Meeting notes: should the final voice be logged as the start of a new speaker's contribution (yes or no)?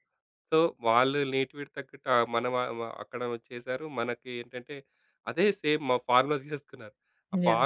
no